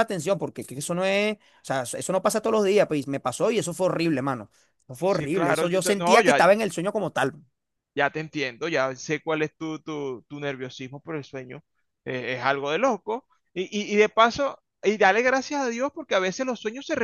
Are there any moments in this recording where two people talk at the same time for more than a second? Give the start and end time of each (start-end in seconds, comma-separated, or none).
5.0-6.4